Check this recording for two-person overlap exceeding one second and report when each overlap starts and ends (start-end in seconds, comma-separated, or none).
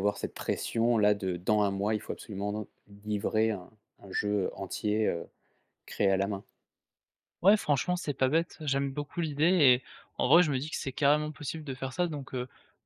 none